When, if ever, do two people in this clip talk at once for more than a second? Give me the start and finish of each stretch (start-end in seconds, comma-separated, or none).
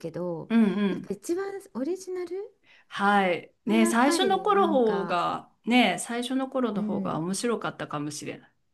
3.7-5.2